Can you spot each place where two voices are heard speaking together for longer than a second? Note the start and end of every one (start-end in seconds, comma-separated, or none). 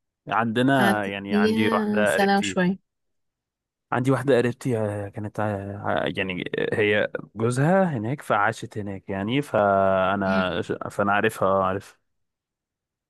0.8-2.6